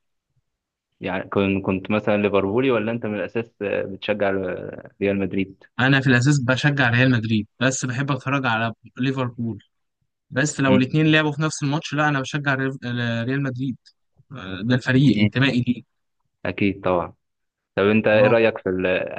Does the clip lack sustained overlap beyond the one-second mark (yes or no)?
yes